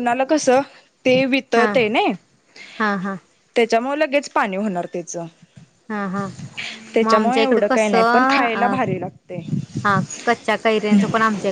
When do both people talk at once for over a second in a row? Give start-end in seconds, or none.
7.0-8.8